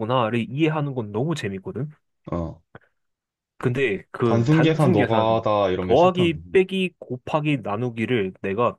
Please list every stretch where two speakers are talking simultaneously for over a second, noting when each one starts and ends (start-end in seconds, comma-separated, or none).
4.2-6.5